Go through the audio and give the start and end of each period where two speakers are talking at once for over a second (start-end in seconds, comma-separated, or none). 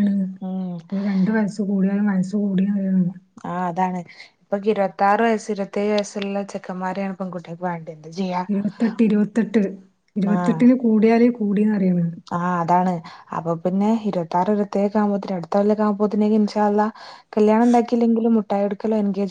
none